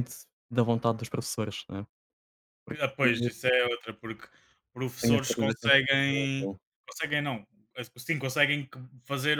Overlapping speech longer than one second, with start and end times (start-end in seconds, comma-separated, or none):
5.0-6.5